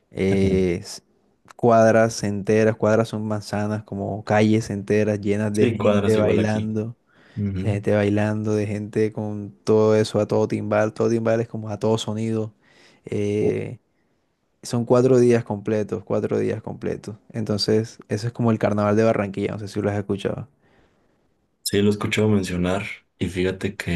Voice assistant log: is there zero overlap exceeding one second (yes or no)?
no